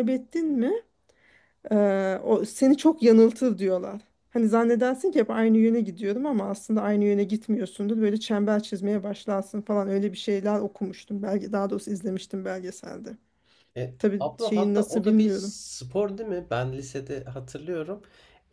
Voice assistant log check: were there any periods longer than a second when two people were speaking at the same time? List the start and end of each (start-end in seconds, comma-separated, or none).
14.0-15.5